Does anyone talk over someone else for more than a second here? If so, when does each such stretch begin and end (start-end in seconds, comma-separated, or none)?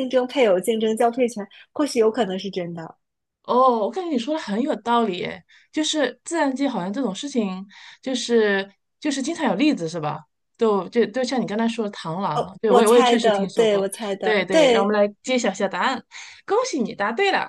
12.3-15.0